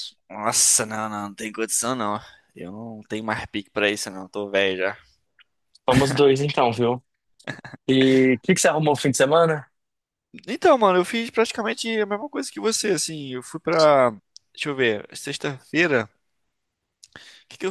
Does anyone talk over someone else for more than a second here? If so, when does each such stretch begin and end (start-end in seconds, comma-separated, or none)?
none